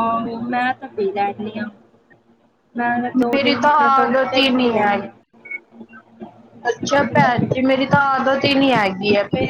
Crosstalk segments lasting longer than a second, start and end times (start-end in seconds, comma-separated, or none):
3.4-5.0